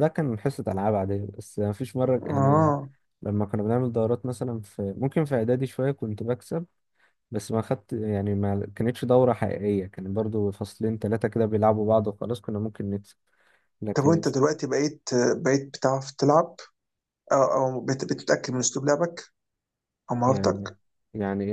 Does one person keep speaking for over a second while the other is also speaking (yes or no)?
no